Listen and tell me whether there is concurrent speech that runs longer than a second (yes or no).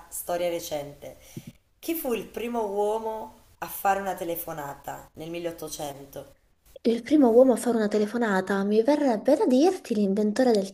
no